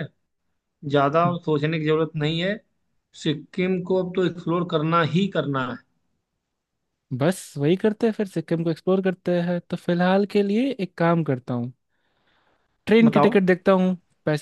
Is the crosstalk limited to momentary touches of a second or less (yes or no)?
yes